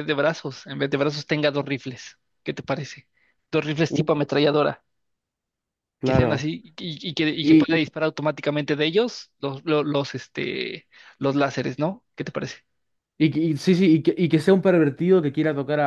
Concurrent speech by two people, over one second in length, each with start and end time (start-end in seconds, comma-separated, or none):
none